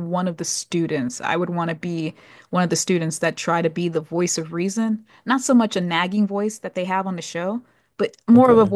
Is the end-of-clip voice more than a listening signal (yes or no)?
no